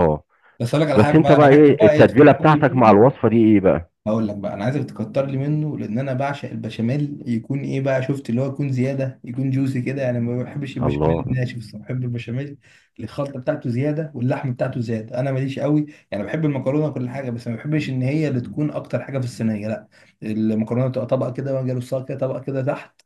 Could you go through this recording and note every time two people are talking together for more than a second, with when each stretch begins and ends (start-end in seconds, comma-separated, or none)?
0.9-2.8